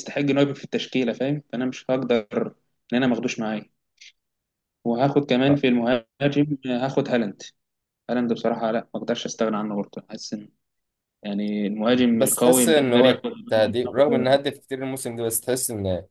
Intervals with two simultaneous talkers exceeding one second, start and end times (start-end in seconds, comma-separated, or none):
12.1-13.3